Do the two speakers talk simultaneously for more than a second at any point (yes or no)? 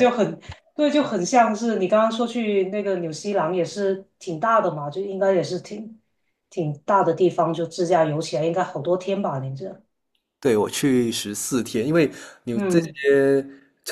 no